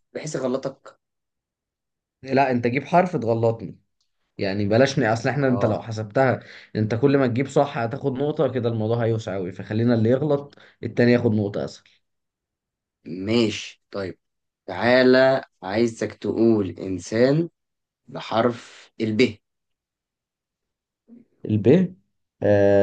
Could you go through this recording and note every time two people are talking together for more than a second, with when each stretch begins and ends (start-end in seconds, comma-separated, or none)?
none